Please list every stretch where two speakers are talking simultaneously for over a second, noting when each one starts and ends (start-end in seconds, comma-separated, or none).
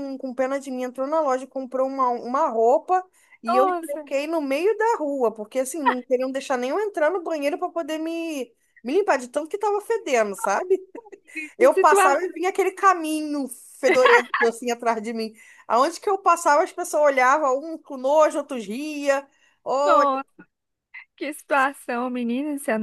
none